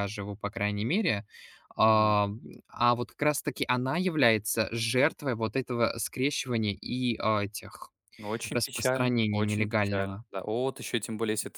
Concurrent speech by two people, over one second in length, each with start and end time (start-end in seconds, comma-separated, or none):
8.5-10.2